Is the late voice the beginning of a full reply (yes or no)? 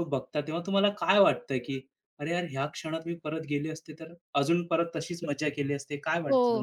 yes